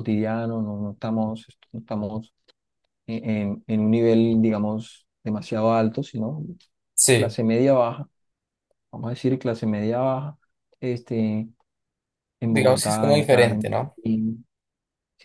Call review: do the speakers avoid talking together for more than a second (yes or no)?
no